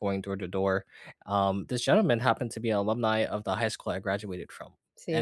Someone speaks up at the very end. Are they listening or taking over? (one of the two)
listening